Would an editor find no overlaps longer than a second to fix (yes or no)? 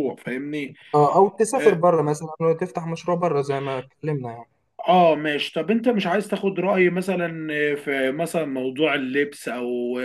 yes